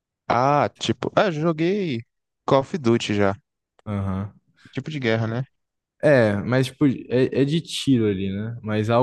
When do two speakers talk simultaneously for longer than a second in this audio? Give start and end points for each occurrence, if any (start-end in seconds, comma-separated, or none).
none